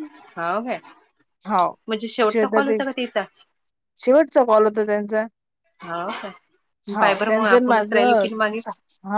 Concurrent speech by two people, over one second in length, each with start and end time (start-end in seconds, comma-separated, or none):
7.0-8.6